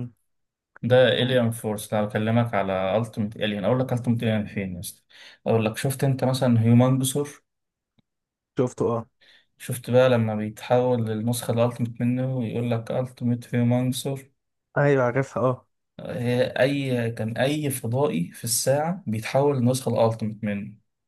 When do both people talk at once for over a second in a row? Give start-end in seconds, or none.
none